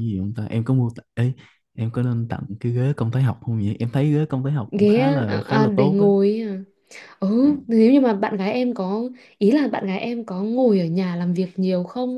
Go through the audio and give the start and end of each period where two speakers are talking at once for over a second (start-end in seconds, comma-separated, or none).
4.8-6.0